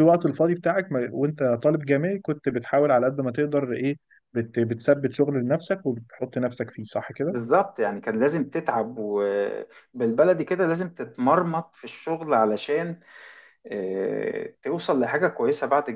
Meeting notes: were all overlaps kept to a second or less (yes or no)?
yes